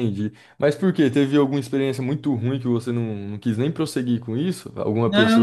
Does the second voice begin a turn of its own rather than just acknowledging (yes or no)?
yes